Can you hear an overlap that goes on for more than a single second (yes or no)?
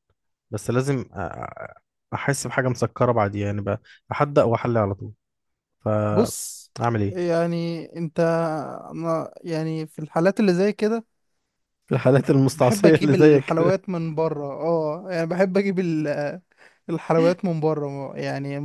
yes